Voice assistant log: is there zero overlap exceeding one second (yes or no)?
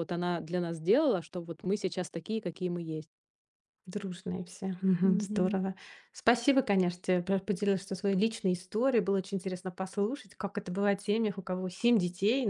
yes